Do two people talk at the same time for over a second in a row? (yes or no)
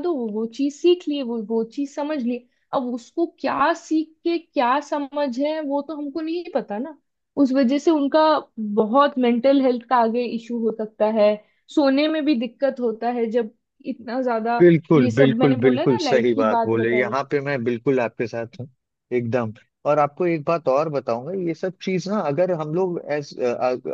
yes